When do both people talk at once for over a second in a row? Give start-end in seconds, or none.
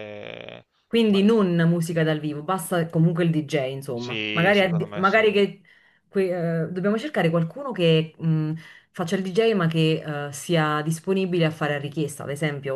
3.9-5.2